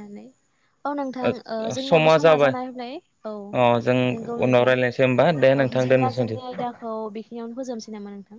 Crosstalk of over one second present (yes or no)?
yes